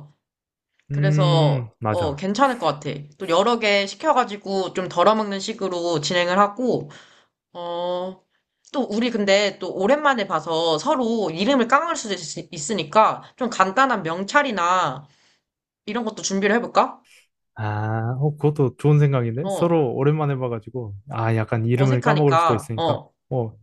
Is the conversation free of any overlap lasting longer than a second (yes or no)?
no